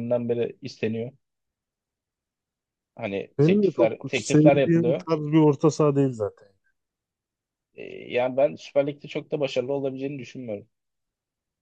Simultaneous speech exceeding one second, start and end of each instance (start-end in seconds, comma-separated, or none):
3.4-5.1